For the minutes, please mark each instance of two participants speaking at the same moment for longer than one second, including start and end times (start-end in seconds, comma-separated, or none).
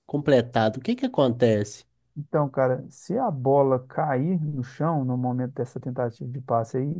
none